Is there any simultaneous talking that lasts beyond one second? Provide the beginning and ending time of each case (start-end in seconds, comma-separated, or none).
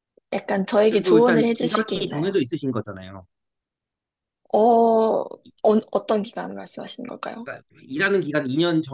0.9-2.4